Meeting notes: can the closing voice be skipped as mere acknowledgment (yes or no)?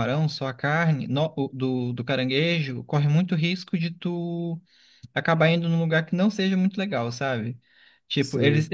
yes